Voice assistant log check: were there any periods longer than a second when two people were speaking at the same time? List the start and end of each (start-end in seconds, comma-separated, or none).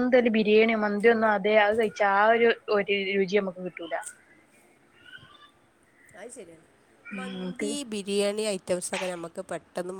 none